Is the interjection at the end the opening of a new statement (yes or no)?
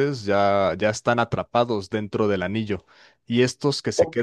no